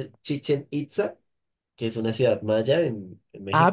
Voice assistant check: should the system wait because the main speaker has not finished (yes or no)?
no